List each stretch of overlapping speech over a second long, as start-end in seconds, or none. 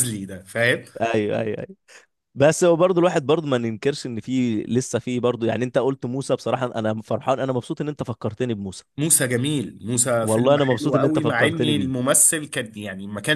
10.2-11.9